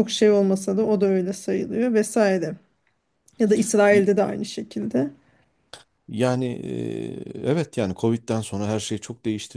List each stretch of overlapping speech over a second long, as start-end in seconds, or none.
none